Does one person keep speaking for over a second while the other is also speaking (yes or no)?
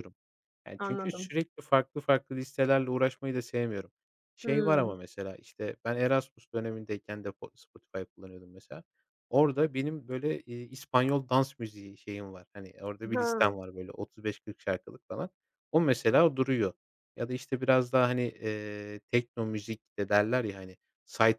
no